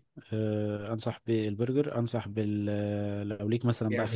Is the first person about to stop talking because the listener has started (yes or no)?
yes